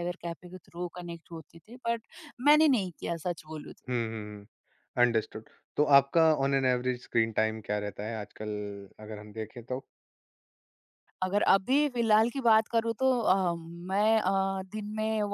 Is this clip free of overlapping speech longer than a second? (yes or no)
yes